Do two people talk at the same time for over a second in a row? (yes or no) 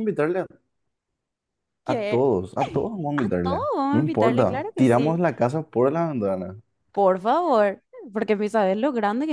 yes